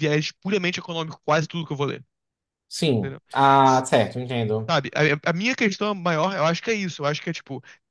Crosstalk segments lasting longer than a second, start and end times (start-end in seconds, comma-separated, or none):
none